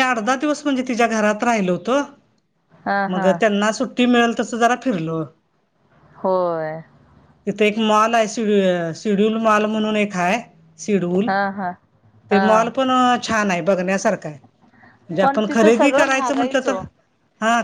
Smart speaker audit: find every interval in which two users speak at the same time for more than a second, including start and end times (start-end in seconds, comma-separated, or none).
15.2-16.8